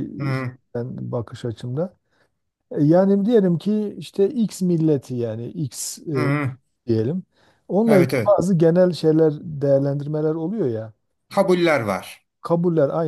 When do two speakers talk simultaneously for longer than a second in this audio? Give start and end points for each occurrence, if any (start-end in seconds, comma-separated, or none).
none